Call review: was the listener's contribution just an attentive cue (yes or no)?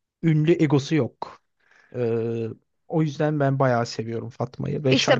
no